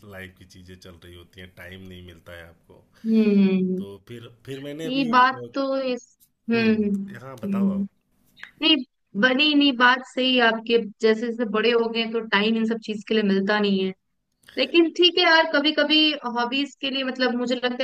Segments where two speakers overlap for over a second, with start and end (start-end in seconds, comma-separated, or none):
6.5-7.9